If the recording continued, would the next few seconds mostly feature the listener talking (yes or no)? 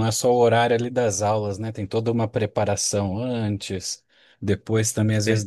no